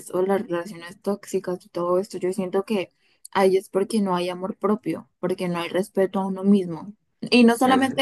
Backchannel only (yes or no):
yes